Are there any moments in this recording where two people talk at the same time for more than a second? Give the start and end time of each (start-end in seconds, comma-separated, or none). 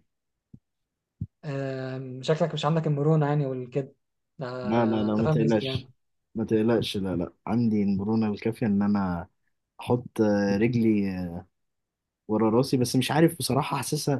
4.6-5.9